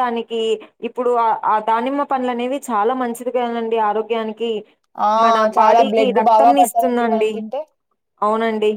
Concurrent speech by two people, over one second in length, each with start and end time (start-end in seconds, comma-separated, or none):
5.6-7.3